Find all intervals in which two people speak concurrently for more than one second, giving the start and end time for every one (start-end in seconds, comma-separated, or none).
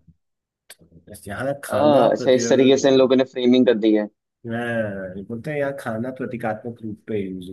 1.7-2.9